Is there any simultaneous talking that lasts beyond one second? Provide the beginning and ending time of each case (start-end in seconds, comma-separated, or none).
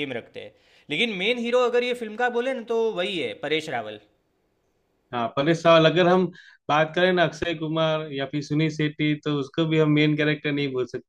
none